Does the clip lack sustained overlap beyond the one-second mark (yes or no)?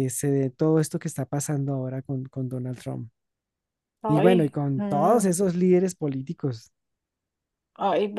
no